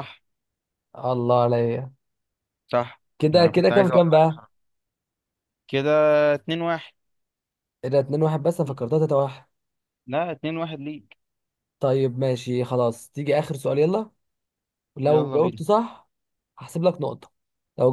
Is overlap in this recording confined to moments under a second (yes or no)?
no